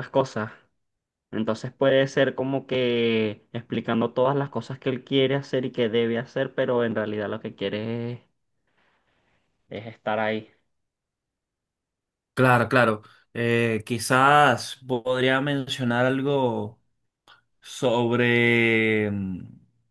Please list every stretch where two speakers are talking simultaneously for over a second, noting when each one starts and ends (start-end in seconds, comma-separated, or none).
none